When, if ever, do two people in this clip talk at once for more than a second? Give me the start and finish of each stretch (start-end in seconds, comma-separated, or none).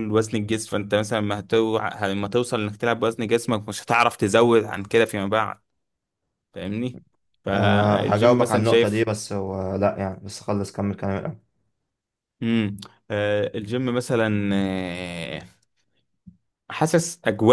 7.5-9.1